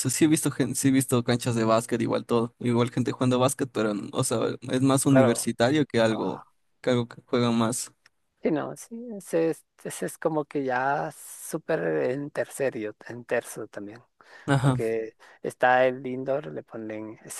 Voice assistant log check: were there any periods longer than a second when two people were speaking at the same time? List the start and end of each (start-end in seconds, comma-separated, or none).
none